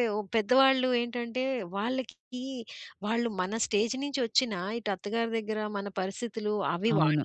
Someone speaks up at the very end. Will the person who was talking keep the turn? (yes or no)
yes